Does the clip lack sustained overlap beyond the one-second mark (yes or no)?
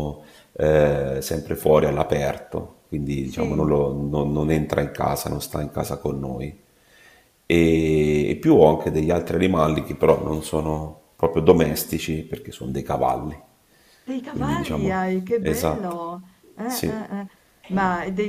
no